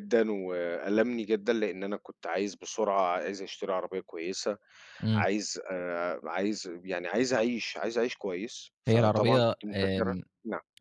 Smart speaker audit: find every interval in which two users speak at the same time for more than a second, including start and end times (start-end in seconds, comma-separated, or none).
8.9-10.2